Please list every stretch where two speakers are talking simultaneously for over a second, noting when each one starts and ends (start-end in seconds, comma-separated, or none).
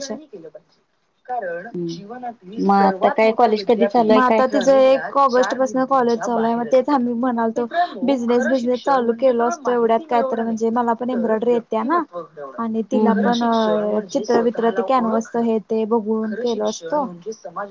2.6-4.4